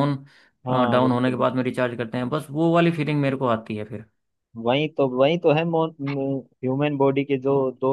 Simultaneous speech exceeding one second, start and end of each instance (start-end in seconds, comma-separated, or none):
none